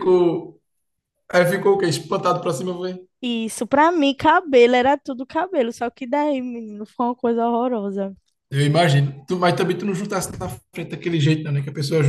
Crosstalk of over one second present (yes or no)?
no